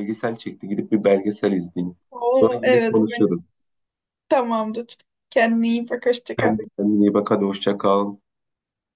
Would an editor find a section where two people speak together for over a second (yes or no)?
yes